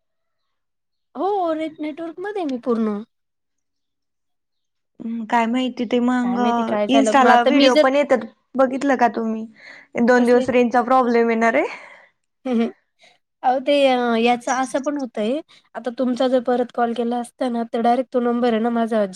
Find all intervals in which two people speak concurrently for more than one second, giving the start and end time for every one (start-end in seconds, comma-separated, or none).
6.2-7.9